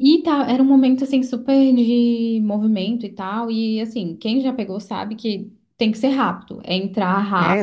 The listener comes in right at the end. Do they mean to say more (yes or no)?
yes